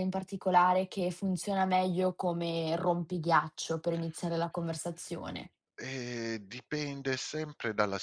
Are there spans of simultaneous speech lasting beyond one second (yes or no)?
no